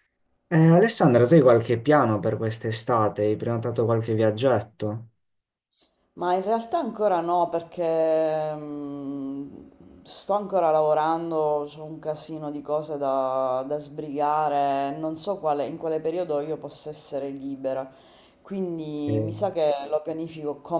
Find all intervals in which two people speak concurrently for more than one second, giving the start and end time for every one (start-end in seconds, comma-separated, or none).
none